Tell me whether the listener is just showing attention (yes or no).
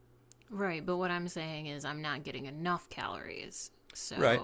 no